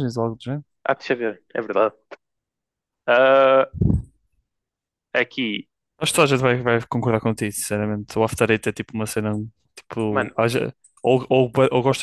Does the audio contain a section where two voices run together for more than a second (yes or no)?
no